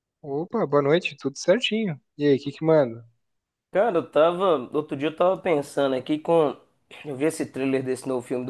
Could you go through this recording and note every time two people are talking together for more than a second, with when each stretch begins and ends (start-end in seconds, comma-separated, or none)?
none